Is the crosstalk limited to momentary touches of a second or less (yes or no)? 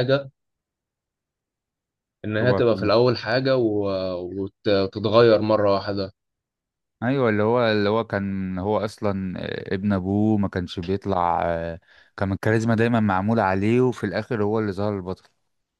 yes